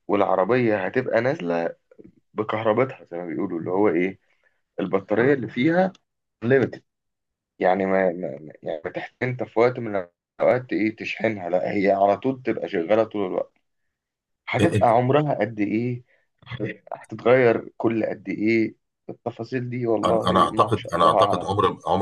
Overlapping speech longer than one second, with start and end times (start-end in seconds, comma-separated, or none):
20.1-21.5